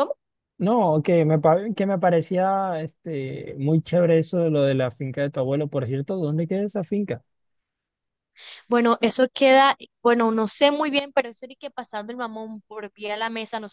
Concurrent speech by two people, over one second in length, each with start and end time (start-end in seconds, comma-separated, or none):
none